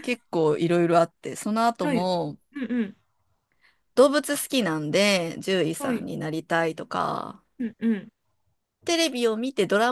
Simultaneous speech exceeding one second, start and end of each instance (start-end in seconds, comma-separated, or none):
none